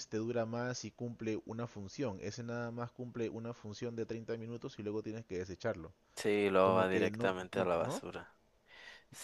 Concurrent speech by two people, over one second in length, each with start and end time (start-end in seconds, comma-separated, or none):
6.6-8.0